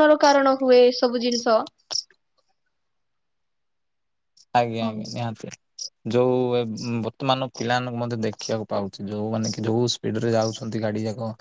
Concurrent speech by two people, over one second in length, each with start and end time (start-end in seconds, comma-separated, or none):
none